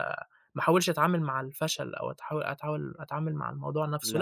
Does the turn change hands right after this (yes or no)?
no